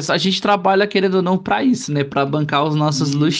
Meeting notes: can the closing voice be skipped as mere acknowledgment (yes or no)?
no